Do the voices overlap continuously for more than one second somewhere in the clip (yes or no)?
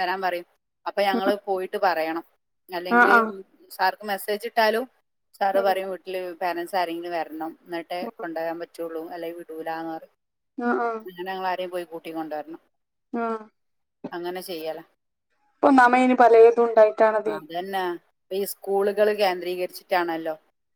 no